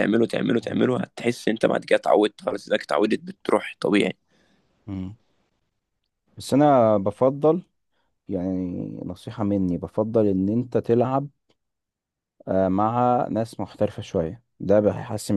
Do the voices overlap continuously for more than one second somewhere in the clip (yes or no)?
no